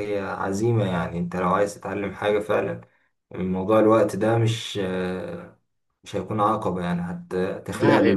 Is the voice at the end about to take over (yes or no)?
no